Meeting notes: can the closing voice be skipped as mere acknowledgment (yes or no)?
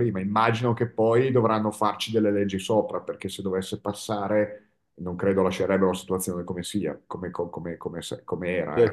no